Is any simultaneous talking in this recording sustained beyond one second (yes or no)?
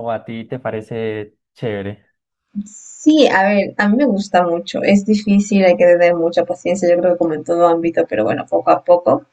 no